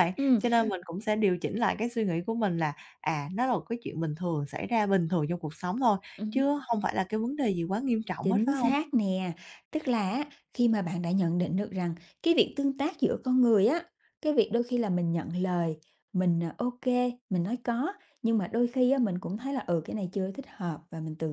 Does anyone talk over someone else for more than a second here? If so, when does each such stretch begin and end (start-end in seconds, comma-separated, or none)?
none